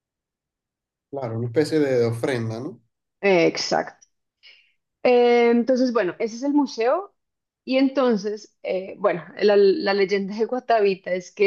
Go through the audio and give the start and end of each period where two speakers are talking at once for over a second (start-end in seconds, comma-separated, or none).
none